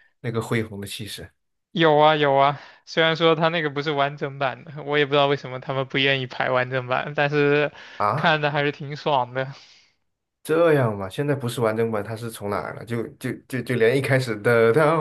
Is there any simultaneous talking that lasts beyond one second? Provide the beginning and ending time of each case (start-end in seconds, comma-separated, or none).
none